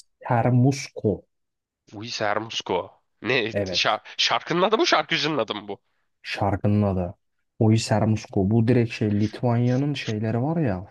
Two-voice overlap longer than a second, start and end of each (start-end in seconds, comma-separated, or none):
none